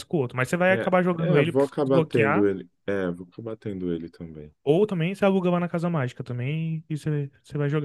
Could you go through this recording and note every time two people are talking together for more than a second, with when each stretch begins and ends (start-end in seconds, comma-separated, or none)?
0.7-2.5